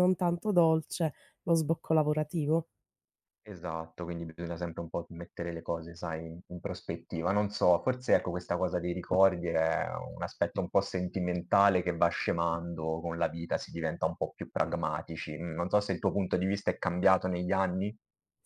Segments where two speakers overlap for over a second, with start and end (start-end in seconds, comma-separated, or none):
none